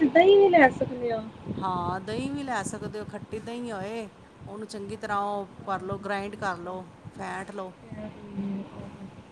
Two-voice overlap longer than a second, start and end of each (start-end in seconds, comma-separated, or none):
none